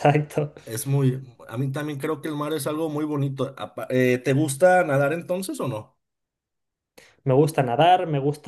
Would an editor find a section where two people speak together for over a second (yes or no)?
no